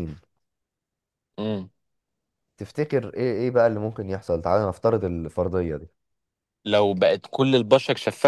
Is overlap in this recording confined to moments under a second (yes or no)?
yes